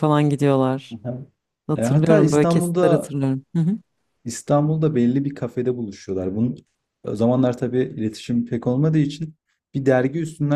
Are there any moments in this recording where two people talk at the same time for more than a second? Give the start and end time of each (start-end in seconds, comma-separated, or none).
1.8-3.1